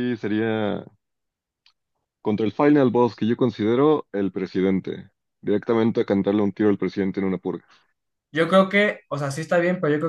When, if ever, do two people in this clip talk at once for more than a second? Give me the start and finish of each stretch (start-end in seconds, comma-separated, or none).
none